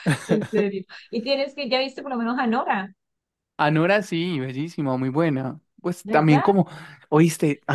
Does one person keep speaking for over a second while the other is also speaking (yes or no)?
no